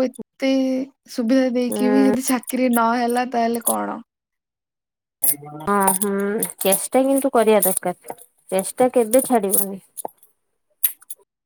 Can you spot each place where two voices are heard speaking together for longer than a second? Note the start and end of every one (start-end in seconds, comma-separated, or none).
none